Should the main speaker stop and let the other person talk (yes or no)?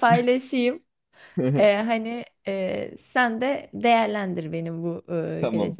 no